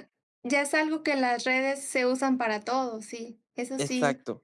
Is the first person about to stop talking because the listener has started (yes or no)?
yes